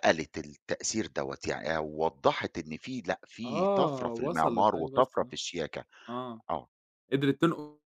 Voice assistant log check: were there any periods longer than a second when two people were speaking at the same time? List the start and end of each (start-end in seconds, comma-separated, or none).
3.5-5.4